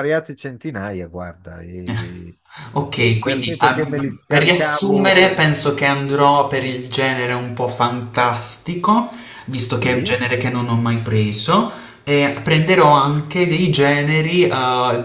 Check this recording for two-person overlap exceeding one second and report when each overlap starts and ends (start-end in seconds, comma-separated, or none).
3.2-5.2